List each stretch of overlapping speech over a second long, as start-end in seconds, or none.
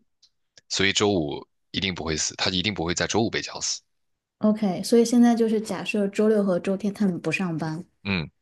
none